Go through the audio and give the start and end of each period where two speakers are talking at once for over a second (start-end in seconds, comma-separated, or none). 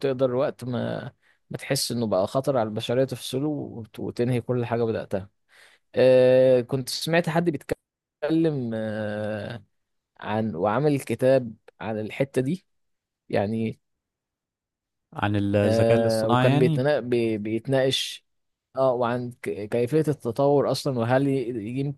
15.6-16.8